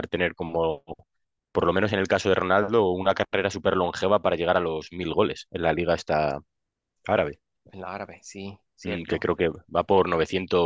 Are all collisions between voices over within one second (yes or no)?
yes